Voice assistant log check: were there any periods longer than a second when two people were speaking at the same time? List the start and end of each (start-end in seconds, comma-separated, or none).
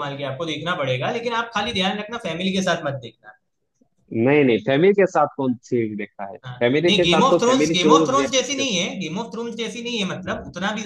6.5-8.7